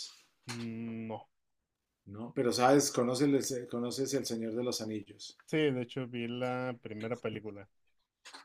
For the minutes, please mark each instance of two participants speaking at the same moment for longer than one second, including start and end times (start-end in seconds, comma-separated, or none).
none